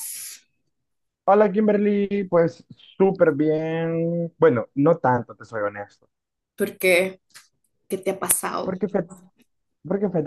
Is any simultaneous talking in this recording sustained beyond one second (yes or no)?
no